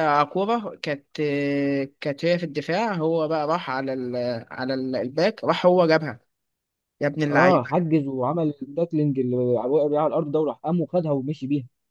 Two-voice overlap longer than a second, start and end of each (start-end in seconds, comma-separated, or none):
none